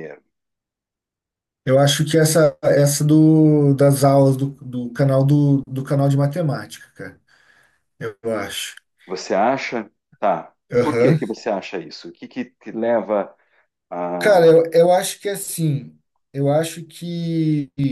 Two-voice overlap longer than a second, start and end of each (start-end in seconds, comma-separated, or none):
none